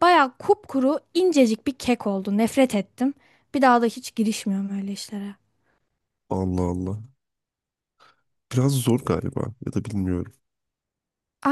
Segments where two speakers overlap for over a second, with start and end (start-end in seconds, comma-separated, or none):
none